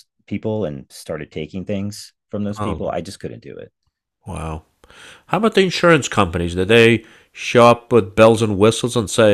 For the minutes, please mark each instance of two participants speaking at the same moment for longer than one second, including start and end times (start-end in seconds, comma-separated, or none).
none